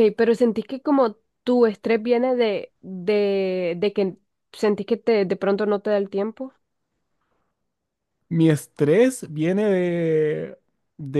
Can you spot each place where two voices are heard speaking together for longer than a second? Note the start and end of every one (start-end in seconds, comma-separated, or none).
none